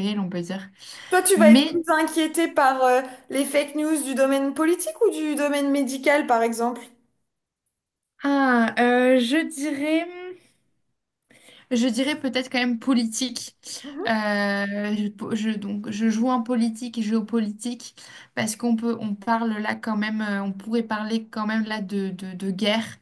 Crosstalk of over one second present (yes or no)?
no